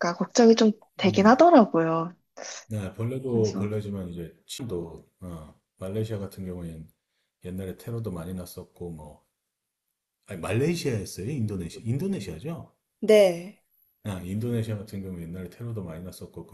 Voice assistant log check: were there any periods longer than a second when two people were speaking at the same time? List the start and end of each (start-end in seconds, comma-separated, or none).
none